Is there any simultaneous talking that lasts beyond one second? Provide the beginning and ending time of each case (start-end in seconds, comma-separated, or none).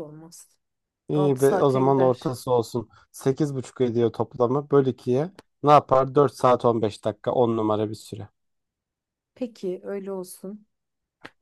1.1-2.4